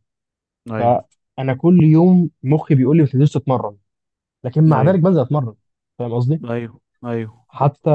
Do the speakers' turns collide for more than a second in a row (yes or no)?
no